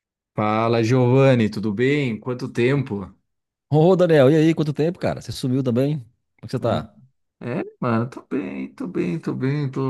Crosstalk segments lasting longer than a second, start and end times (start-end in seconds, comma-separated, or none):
none